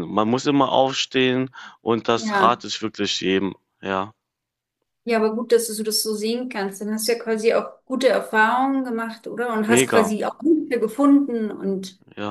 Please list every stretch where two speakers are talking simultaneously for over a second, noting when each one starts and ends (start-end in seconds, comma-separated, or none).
none